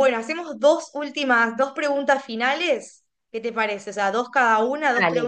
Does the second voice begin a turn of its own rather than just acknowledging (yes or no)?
no